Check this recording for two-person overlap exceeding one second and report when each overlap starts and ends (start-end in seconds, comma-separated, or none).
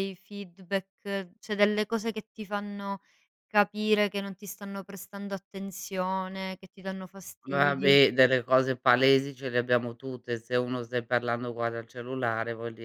none